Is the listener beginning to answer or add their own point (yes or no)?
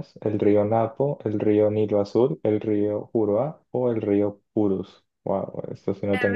yes